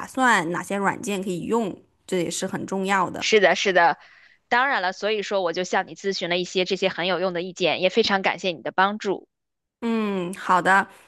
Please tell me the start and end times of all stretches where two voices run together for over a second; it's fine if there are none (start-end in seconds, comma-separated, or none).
none